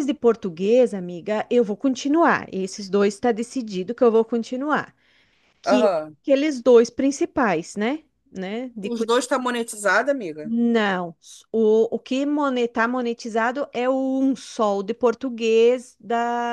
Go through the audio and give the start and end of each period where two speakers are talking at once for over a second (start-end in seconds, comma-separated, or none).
none